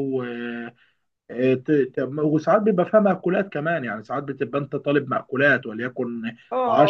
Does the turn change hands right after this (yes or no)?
yes